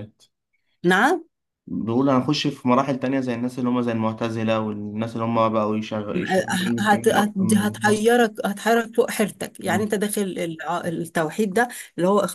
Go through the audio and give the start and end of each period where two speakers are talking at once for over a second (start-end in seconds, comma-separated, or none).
6.8-8.2